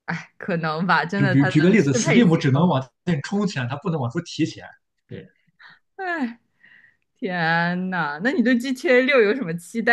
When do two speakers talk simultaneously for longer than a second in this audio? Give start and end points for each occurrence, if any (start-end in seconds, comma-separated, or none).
1.2-2.8